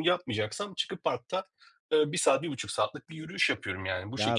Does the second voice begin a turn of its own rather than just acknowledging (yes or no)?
yes